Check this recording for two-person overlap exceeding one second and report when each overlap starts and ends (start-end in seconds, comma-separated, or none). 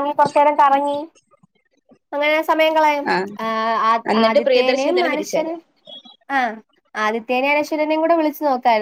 4.2-5.6